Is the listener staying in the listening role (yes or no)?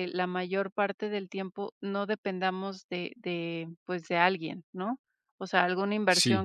yes